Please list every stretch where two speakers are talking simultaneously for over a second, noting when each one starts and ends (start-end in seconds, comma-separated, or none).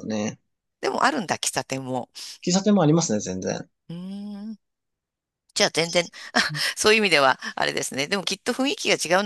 none